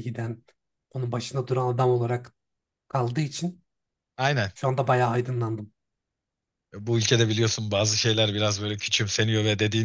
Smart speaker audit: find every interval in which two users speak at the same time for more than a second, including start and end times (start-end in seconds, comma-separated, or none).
none